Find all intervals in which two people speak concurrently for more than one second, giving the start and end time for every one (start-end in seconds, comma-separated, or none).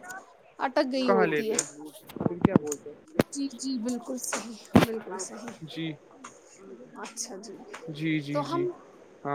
none